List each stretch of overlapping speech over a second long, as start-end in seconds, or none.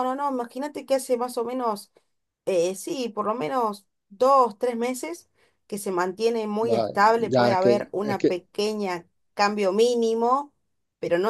6.6-8.3